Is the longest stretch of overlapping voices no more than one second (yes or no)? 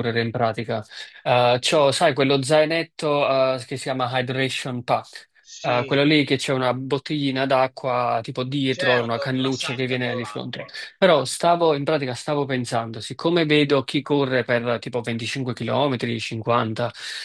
no